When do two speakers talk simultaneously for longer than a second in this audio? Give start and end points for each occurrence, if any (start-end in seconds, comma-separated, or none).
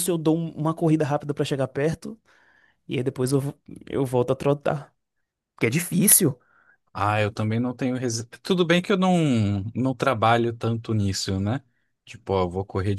none